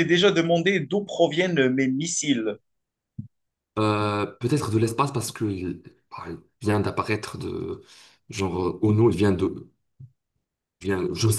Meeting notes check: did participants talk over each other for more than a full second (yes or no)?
no